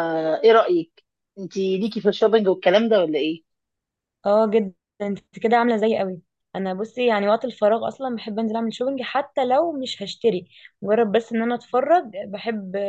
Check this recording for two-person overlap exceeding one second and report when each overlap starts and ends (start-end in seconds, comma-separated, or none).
none